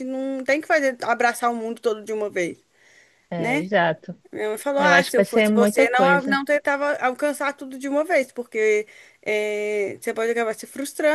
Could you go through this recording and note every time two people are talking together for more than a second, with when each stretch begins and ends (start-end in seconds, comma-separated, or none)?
4.8-6.4